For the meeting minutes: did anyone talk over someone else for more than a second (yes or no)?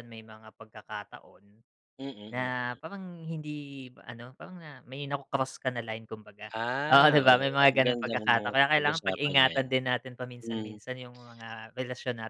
yes